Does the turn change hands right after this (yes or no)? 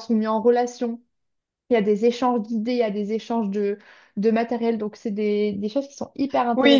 yes